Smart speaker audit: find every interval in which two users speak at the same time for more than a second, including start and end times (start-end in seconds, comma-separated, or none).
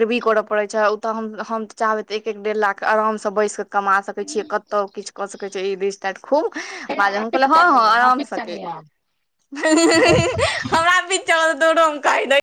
7.0-8.6